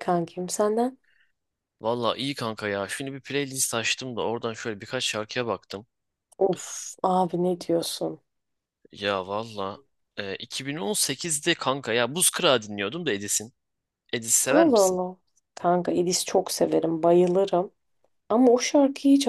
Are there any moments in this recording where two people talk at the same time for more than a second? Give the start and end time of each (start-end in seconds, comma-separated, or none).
none